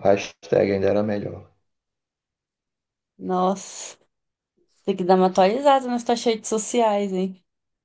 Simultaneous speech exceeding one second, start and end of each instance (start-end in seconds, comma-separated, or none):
none